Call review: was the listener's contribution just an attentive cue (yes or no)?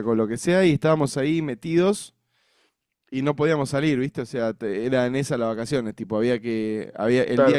yes